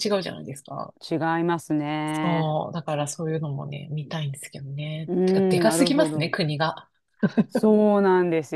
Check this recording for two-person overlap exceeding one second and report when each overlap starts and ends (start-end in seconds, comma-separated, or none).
5.1-6.3